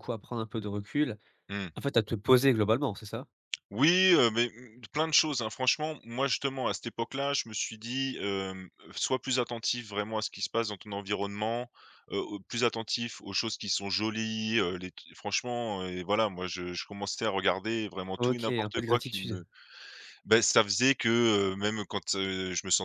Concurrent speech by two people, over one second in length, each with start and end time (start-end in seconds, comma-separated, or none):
18.2-19.4